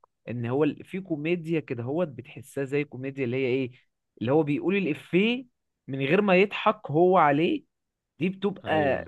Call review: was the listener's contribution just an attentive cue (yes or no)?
yes